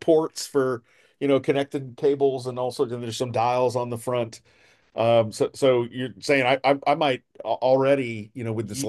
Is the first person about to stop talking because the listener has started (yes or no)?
no